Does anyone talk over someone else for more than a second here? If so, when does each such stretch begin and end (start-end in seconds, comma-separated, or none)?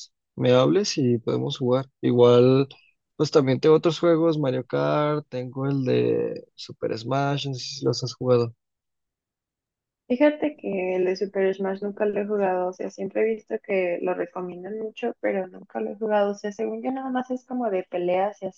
none